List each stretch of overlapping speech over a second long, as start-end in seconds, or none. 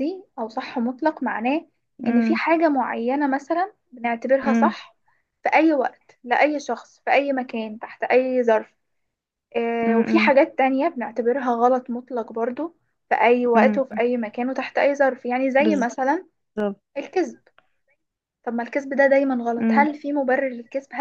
none